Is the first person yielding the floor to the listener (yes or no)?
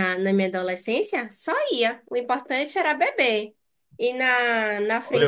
yes